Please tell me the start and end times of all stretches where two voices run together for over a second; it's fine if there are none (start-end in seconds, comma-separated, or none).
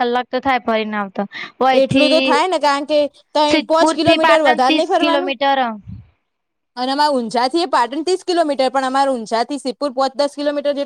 3.5-5.3